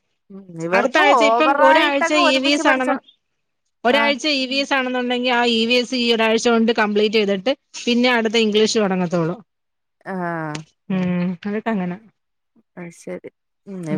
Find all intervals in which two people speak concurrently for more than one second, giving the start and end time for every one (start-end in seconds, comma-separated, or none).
0.8-2.9